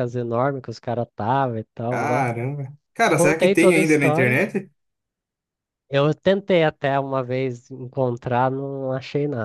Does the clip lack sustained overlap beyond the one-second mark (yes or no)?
no